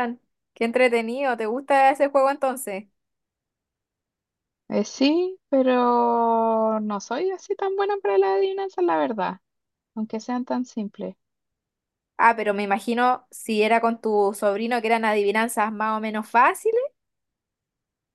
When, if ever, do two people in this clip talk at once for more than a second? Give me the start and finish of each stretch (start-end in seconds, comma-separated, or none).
none